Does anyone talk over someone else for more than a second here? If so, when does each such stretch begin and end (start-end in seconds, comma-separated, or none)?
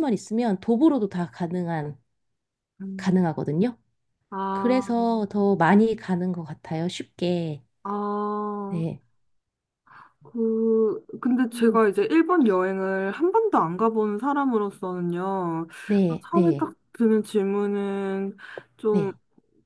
none